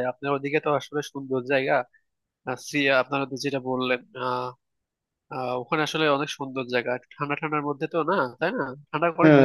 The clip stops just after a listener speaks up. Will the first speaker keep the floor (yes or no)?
no